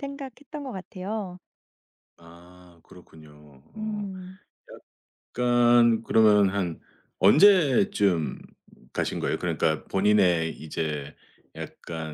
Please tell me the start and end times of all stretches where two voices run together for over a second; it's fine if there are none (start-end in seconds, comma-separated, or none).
none